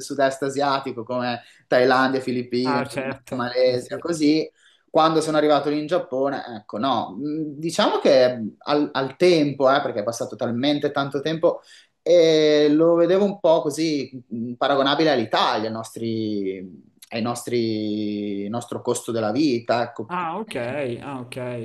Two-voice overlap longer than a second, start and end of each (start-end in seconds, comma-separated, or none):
2.6-4.0